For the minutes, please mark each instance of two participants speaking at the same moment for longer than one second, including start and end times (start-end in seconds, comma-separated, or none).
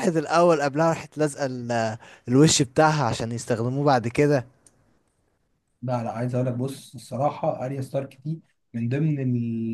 none